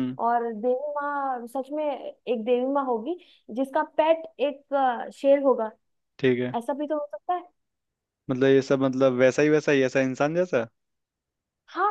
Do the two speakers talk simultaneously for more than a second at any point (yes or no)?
no